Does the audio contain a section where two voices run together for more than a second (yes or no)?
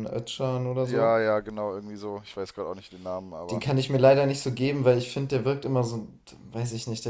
no